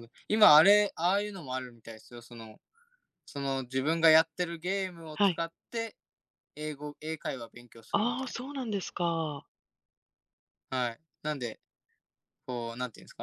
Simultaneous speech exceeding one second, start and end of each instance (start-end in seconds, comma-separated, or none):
none